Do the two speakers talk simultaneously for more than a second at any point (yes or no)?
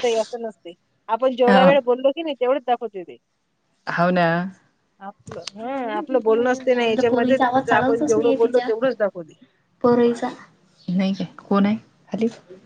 yes